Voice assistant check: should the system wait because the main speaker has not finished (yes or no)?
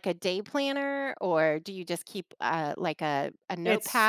no